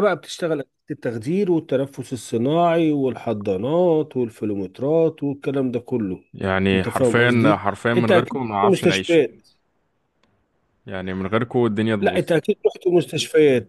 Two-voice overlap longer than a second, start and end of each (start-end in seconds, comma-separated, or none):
6.7-9.2